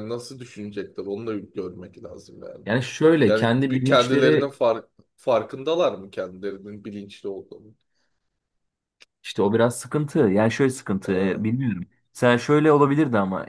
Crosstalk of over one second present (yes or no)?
yes